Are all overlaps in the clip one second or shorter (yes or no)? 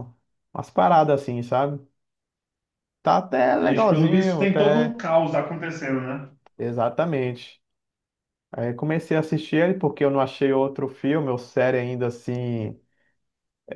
no